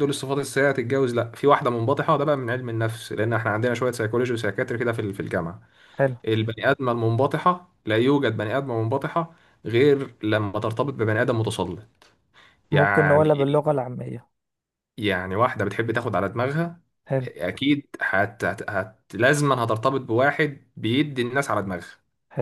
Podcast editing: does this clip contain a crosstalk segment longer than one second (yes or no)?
no